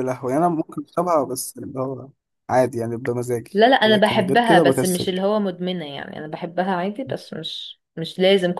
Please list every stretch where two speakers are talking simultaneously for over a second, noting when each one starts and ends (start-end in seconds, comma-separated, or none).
3.5-5.1